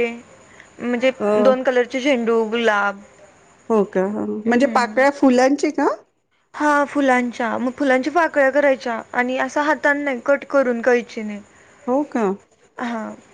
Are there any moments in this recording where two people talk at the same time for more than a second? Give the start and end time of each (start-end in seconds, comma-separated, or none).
none